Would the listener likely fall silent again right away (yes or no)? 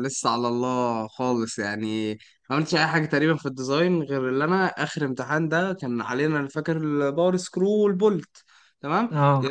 yes